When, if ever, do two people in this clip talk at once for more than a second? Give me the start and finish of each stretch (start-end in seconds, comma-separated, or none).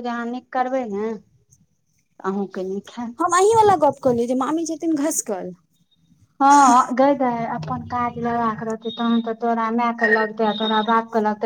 none